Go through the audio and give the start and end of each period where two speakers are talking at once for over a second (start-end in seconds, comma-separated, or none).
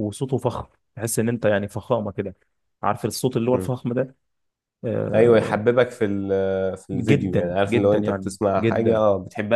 6.9-9.0